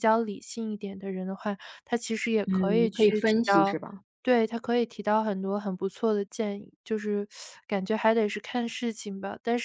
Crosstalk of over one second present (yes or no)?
yes